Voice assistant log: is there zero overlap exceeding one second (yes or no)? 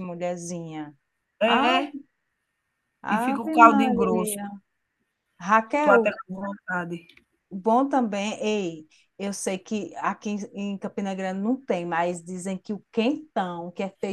no